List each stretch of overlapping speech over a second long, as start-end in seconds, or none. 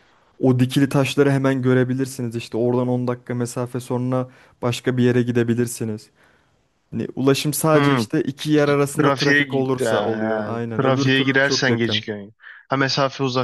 9.0-12.0